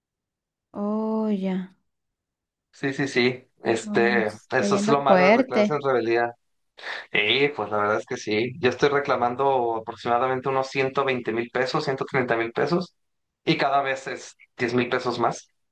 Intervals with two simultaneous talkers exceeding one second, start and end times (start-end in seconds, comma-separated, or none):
3.8-5.8